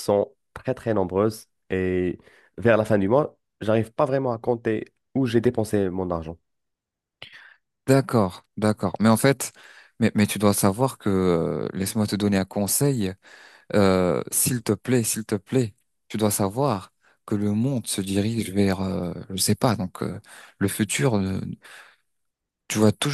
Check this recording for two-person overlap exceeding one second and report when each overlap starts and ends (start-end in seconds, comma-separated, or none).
none